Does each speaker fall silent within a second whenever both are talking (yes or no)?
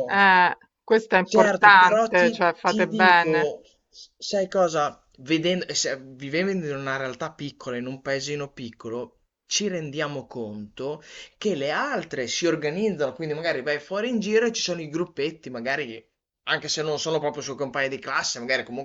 no